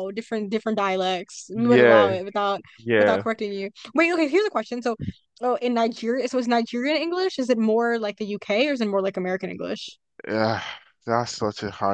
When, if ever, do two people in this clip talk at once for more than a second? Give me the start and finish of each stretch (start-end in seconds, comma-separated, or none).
none